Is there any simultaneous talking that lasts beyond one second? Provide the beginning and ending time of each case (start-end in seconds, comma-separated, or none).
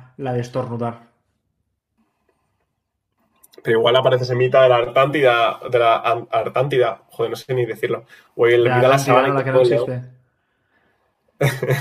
8.6-9.9